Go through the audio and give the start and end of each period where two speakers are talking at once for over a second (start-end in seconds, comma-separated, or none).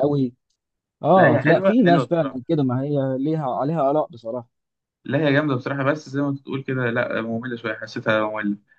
1.1-2.4